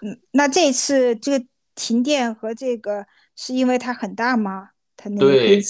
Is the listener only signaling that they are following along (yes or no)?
no